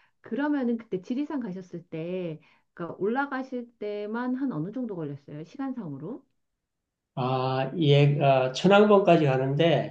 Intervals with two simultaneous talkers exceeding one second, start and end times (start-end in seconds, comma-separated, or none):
none